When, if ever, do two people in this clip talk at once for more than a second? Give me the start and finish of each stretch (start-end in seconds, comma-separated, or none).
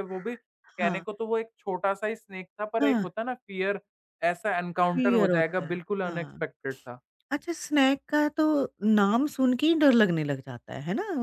4.9-6.5